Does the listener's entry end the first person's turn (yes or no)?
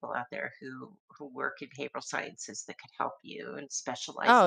yes